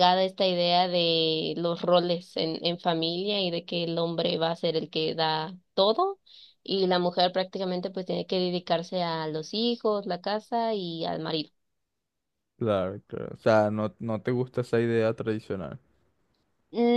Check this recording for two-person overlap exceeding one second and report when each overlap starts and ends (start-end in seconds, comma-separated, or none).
none